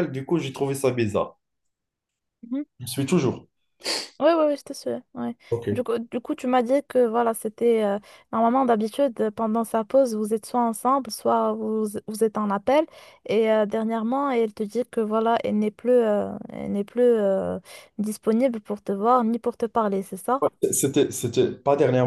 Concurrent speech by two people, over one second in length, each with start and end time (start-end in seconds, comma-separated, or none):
none